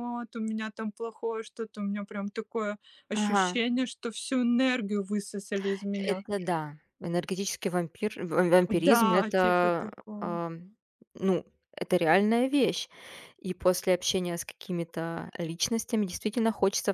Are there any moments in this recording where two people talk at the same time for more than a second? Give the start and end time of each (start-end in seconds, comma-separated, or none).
8.7-10.4